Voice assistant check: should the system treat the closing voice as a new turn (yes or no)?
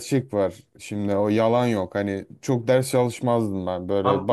yes